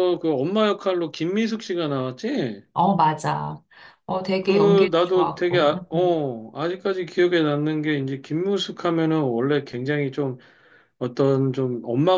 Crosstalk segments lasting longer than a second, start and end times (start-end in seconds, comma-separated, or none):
4.4-6.2